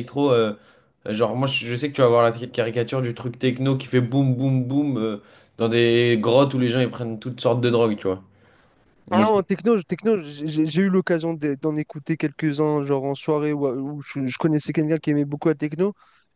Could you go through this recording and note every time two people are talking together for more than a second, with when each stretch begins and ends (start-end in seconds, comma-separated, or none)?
none